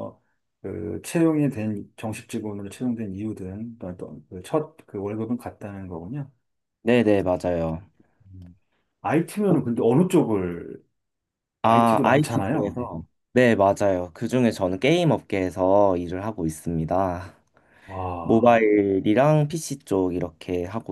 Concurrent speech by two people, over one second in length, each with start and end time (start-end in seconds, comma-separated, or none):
11.6-12.9